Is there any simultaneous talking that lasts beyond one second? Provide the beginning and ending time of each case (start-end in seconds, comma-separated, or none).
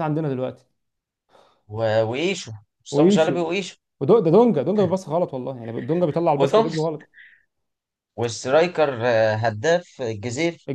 none